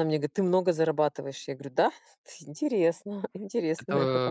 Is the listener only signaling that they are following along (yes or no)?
no